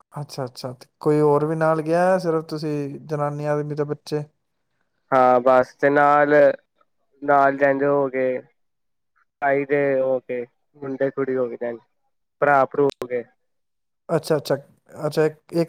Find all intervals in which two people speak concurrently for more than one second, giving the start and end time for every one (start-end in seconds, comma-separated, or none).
none